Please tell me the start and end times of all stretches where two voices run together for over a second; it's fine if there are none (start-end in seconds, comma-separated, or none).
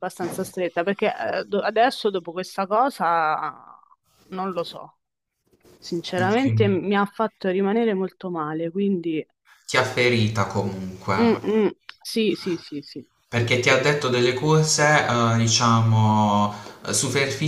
none